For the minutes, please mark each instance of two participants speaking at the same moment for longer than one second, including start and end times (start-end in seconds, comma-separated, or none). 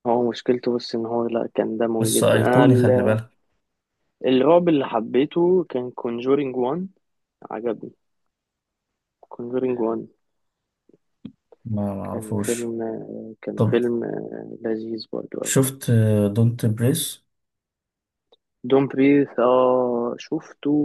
2.0-3.2